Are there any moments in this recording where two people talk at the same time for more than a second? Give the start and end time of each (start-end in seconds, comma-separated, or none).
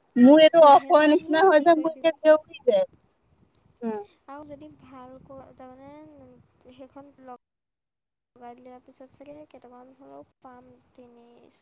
0.6-2.1